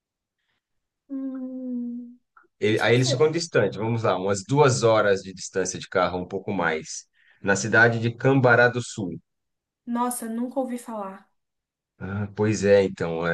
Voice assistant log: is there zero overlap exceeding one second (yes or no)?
yes